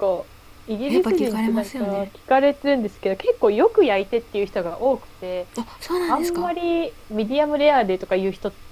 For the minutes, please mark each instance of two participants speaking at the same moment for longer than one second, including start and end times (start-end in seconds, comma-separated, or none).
0.9-2.1